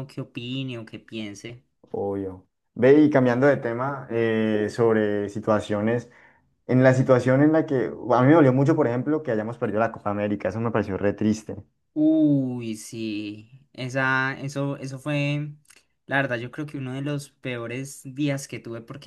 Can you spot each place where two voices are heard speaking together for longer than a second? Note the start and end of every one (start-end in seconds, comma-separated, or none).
none